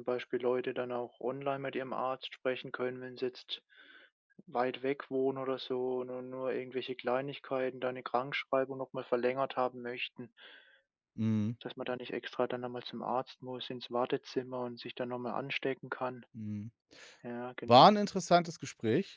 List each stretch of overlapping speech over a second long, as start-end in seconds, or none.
none